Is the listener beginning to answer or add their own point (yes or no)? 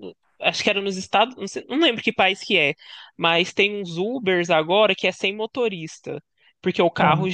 no